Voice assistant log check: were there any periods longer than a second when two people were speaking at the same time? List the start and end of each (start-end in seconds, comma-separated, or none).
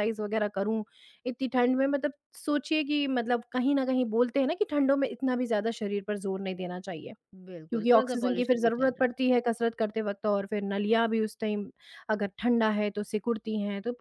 7.7-9.1